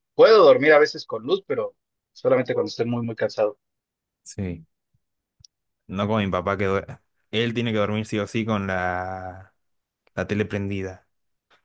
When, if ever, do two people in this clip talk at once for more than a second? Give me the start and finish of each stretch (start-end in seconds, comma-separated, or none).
none